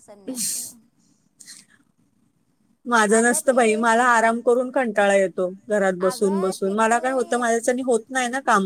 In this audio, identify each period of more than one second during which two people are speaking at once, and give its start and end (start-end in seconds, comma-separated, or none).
6.1-7.6